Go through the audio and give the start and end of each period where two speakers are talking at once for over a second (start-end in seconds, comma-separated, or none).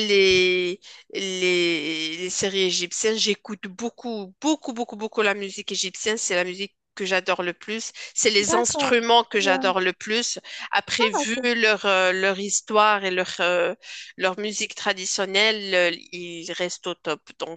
8.4-9.8